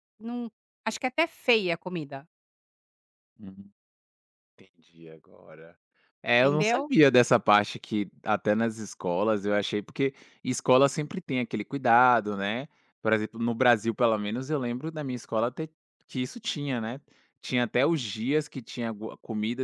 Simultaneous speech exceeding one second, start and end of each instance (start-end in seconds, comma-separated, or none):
none